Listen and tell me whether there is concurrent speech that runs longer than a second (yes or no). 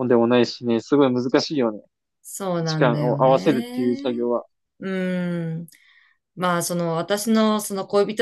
yes